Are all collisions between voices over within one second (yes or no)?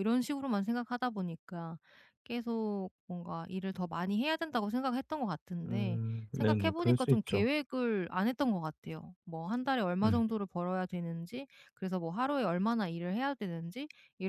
no